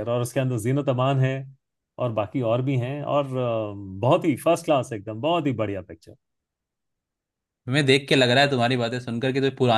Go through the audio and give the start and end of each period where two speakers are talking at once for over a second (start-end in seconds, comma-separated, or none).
none